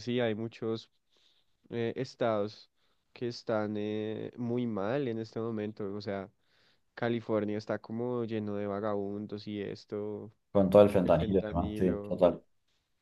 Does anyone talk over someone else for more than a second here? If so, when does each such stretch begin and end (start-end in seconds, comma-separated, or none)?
11.0-12.2